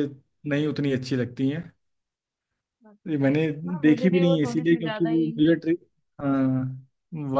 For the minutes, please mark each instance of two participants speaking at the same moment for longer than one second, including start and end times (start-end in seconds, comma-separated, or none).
3.1-5.3